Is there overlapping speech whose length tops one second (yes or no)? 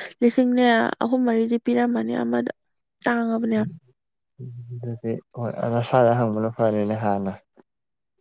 no